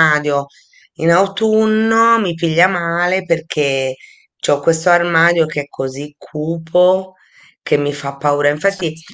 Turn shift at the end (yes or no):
no